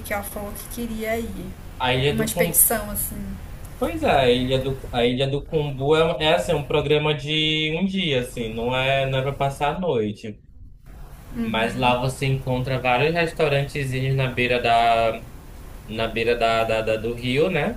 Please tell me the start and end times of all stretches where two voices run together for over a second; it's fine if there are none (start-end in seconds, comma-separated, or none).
none